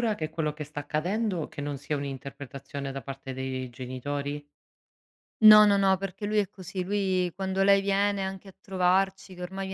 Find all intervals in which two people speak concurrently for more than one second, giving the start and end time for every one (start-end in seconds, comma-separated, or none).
none